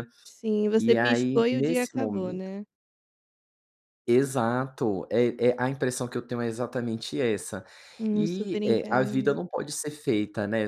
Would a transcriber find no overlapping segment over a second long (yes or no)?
no